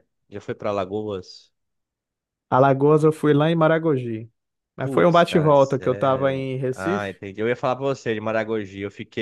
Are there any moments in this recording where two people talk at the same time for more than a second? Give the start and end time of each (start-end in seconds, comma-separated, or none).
4.8-7.1